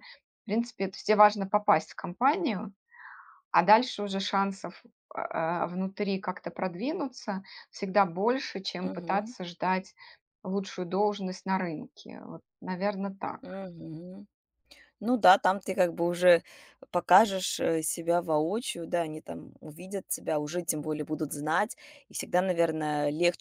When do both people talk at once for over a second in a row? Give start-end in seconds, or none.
none